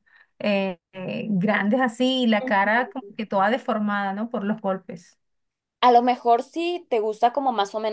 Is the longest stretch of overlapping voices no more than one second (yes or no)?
yes